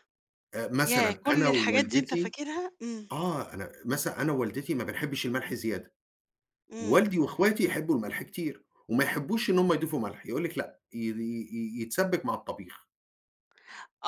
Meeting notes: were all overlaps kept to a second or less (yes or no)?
no